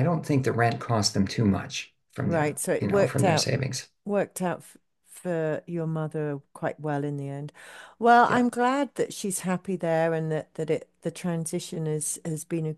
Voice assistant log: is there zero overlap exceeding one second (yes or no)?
no